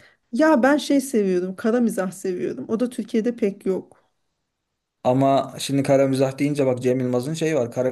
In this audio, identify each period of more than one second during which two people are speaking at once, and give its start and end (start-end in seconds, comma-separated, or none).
none